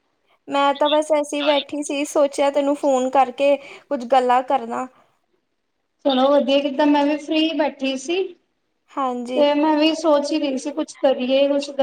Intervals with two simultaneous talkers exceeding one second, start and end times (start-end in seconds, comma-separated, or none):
none